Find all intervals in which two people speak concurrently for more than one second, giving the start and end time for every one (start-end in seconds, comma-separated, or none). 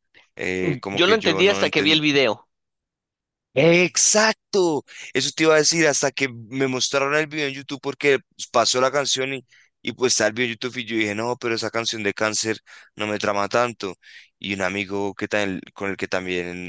0.6-2.0